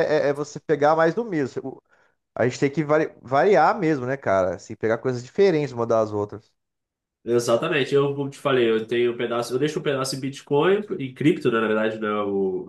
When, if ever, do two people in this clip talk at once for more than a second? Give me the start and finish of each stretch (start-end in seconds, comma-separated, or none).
none